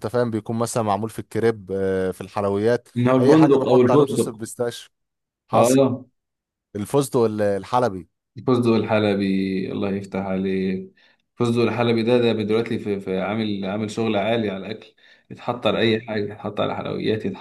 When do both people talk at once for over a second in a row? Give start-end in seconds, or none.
3.0-4.4